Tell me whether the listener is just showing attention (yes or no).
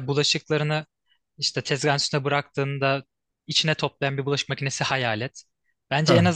yes